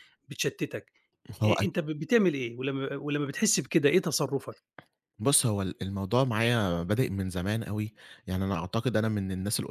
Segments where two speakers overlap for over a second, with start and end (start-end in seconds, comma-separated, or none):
none